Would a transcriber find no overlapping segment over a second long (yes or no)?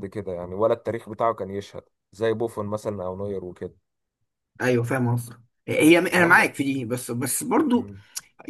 yes